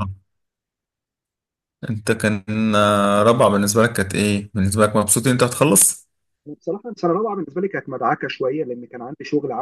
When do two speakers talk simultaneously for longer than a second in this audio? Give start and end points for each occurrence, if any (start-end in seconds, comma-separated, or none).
none